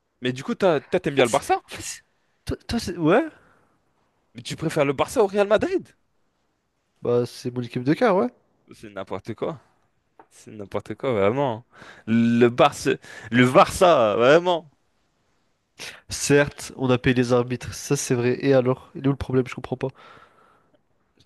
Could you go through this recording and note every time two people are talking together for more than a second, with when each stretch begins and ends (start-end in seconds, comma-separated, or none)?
none